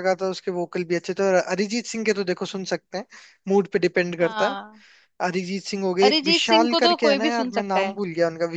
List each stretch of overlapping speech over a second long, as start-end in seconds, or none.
6.0-7.9